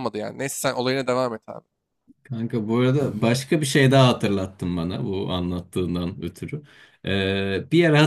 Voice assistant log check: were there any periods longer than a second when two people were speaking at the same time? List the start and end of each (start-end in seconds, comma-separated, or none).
none